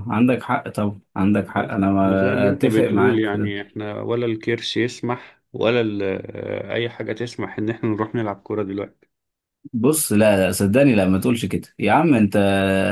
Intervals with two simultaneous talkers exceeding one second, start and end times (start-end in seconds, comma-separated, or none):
1.5-3.5